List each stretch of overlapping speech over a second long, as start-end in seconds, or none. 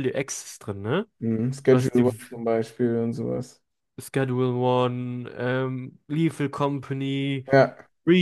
none